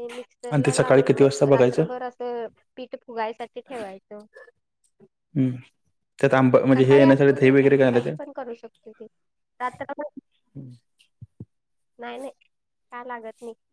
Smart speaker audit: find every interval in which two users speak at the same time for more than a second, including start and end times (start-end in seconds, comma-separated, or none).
0.5-1.8